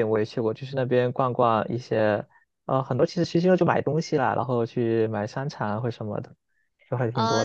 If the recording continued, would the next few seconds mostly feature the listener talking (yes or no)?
yes